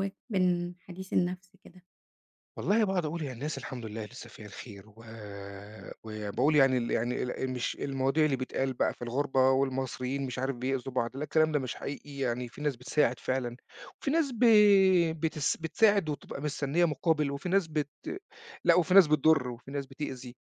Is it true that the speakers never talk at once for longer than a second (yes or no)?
yes